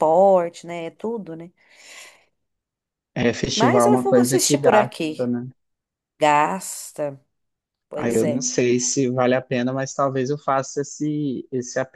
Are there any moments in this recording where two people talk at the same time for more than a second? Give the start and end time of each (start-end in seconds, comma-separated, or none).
3.5-5.3